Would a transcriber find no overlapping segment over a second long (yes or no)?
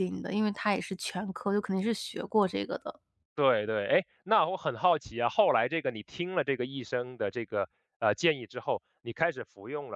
yes